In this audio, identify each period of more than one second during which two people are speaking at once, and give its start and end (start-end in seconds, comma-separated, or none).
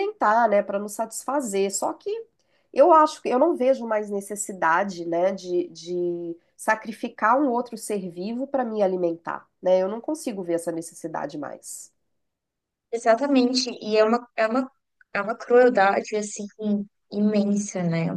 none